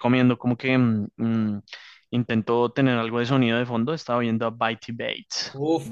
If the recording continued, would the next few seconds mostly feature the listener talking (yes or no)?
yes